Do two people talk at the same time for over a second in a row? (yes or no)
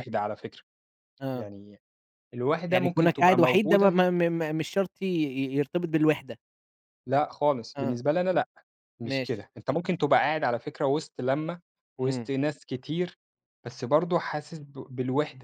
yes